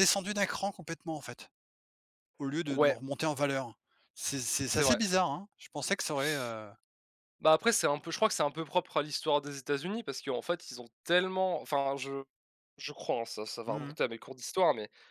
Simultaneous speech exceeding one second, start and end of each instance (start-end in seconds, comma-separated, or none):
none